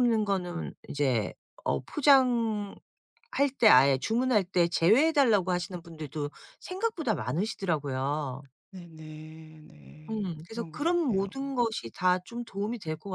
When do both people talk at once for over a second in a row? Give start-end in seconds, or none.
10.1-11.3